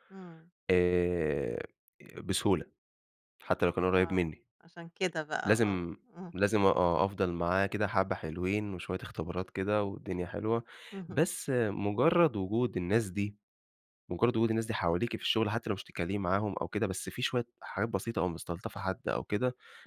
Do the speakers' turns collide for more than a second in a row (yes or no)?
no